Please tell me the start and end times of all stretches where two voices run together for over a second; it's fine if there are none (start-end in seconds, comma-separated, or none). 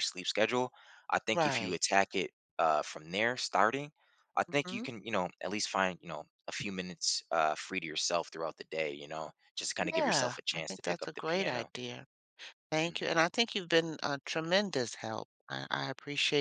9.8-11.7